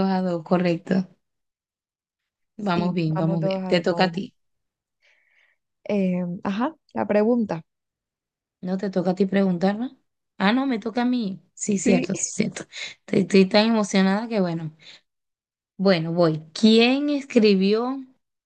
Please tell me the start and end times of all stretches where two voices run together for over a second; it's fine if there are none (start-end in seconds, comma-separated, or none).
2.6-4.3